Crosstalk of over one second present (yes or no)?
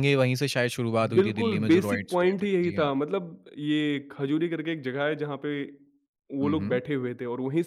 yes